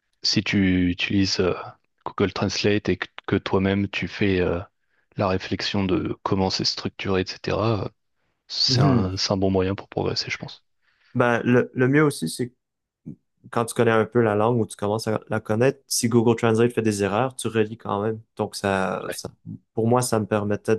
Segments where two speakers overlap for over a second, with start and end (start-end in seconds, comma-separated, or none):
none